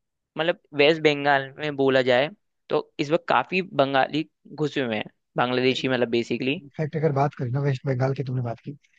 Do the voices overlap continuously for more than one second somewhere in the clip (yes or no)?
no